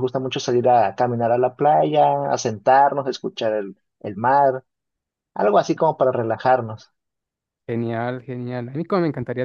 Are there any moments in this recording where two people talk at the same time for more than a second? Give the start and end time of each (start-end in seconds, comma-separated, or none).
none